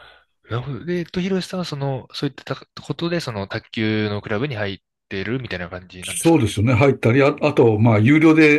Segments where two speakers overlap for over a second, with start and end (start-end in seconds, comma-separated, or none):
none